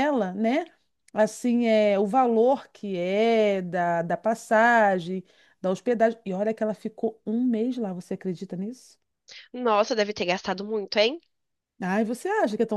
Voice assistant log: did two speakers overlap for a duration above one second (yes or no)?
no